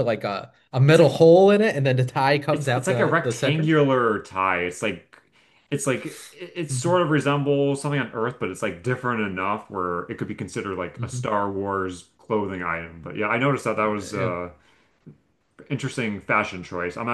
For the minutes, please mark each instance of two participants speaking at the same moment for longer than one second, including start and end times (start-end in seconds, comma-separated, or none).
2.5-3.8